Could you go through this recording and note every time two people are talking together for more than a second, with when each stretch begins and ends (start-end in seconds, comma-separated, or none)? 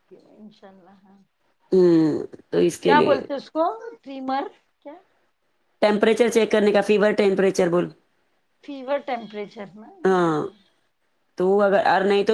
none